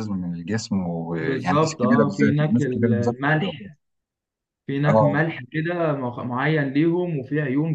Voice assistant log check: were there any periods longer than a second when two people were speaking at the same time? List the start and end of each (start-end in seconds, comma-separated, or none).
1.2-3.7